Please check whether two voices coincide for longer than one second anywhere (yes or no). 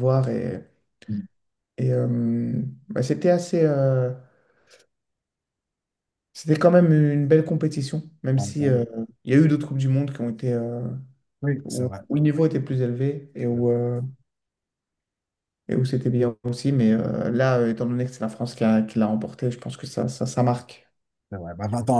no